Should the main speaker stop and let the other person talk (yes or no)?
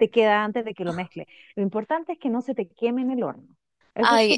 yes